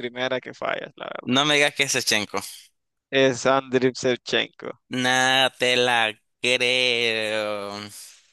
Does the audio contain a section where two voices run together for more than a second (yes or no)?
no